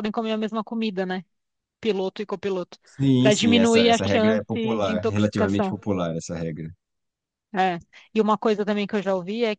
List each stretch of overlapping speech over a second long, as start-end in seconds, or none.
3.2-5.8